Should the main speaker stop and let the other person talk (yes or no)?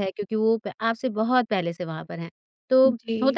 no